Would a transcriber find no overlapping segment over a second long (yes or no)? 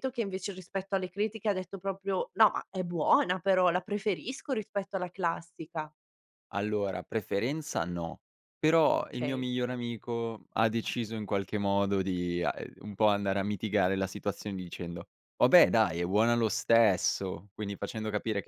yes